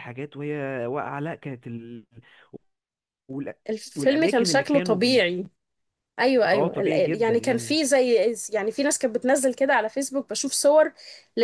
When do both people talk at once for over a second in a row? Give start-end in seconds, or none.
4.0-5.2, 6.5-7.8